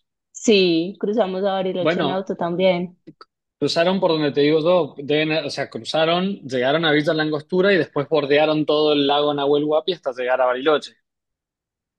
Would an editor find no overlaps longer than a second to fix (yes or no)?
yes